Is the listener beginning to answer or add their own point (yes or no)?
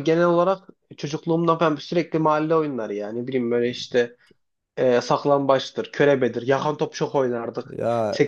no